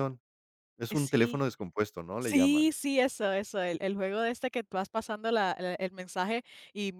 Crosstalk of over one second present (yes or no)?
no